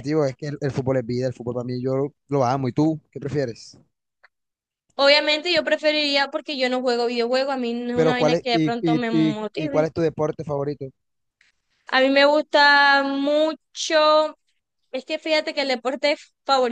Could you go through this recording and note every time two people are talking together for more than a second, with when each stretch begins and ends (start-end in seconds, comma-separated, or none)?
7.9-9.9